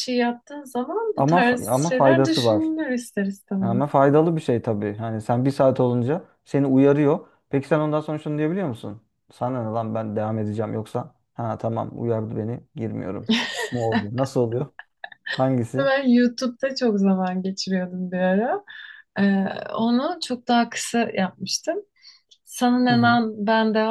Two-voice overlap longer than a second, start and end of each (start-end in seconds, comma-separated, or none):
1.2-2.7